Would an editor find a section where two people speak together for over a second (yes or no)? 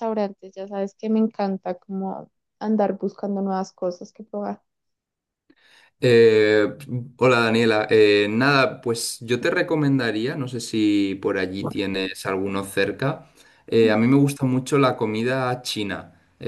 no